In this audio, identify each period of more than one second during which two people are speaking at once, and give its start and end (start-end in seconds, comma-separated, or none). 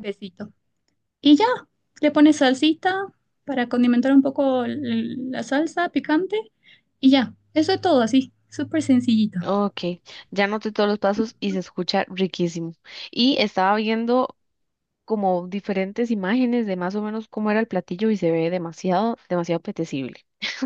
none